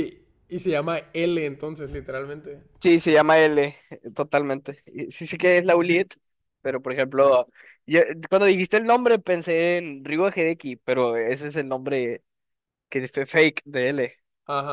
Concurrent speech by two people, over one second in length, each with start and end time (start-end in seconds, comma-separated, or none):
none